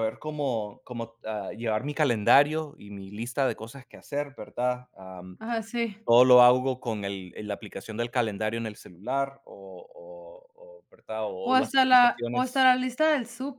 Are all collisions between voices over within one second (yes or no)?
no